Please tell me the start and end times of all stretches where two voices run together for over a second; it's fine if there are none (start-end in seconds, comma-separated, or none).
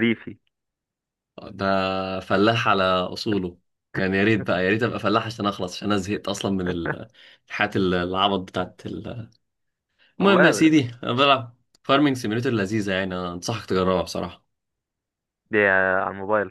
none